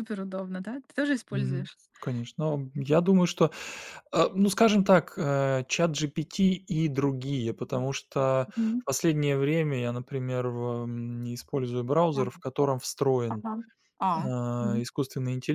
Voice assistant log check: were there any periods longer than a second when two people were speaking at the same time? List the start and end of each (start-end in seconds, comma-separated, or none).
none